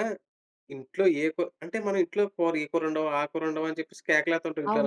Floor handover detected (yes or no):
yes